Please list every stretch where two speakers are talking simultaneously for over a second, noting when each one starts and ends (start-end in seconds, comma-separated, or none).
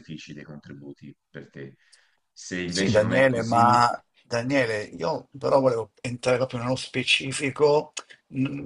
2.6-3.8